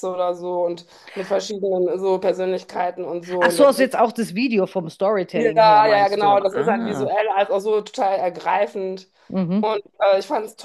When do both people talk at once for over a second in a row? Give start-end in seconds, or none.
5.3-7.1